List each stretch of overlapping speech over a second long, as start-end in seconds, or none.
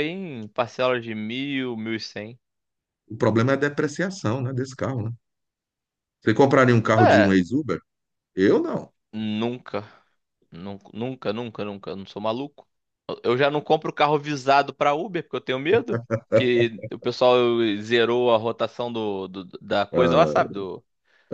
none